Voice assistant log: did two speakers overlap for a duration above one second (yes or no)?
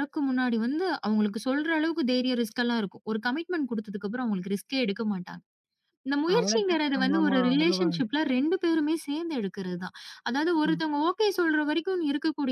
yes